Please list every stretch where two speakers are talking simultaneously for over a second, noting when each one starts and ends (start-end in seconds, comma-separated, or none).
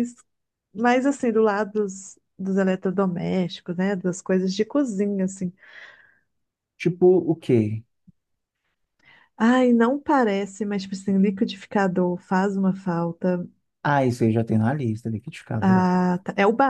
none